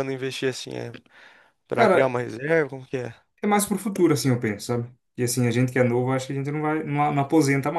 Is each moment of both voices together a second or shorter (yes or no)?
yes